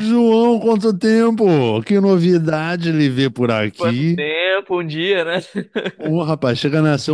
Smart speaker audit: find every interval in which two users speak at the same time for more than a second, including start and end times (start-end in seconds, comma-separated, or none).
none